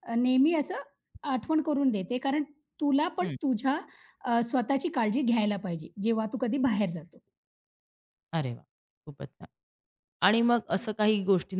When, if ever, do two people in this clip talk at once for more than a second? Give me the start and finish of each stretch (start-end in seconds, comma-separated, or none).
none